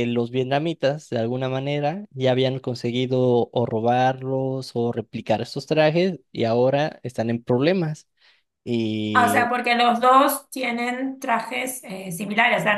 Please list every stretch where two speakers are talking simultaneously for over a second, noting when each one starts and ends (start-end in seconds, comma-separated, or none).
none